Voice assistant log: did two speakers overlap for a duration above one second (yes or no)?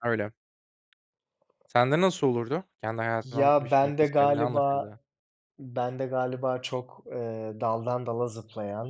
yes